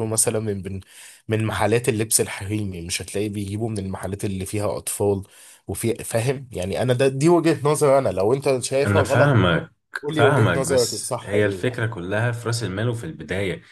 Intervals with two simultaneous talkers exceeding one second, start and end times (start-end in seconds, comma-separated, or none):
10.1-11.8